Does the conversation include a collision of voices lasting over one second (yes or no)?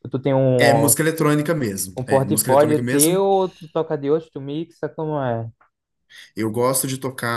yes